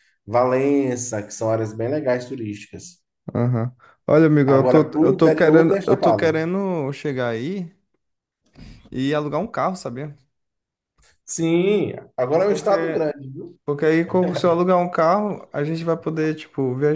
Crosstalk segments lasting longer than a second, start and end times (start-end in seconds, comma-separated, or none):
4.5-6.4